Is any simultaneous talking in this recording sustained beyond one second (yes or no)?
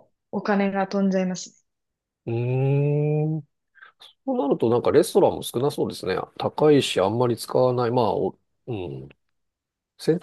no